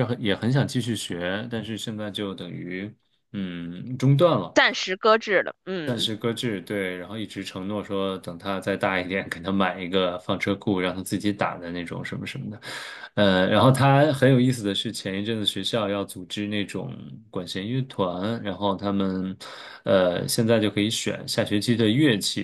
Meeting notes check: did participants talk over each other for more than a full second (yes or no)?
no